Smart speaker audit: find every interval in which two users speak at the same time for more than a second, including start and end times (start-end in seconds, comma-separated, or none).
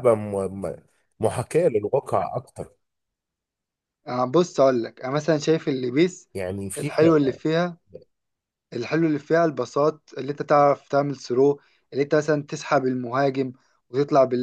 none